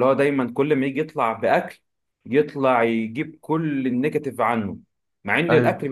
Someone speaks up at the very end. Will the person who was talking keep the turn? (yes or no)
yes